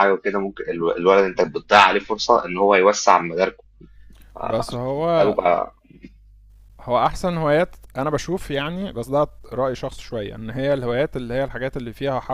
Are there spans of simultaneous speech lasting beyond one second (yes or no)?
no